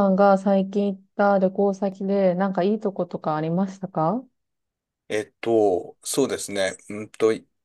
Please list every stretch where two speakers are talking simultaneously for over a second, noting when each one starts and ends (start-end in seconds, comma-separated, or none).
none